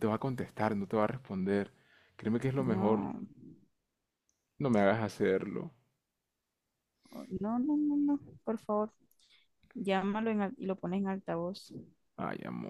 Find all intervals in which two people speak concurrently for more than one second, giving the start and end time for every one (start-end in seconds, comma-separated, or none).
none